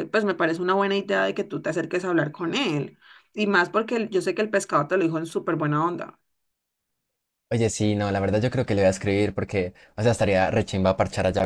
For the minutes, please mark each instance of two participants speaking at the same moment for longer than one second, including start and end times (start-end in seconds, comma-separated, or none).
none